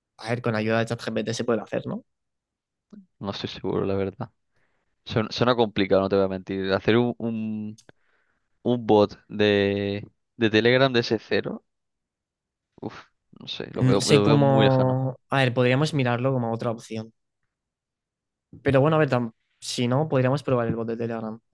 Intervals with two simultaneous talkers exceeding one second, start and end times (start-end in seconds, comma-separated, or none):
13.7-15.0